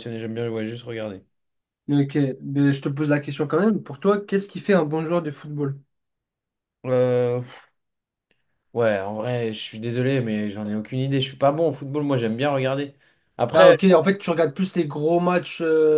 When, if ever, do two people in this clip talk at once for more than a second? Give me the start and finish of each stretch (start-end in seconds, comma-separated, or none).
none